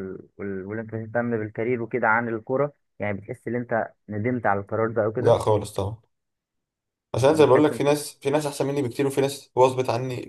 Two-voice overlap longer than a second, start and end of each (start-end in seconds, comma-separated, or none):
none